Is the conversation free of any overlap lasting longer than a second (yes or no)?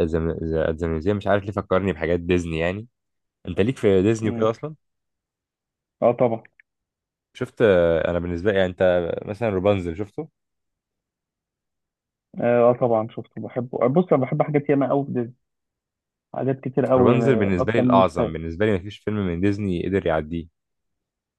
no